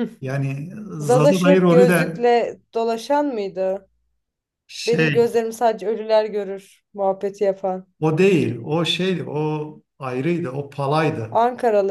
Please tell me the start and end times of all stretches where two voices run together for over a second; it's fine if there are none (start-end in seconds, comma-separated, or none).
1.0-2.2